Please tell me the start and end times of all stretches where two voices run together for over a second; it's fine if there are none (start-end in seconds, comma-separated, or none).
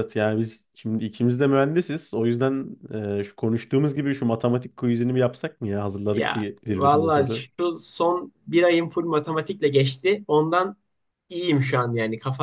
6.1-7.5